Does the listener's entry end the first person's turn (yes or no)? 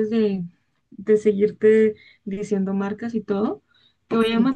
no